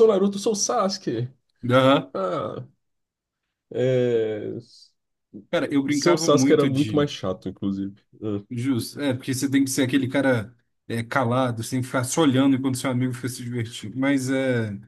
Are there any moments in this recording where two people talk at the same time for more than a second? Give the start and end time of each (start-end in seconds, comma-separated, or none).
5.9-7.1